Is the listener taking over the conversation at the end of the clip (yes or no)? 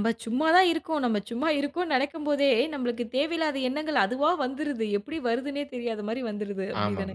yes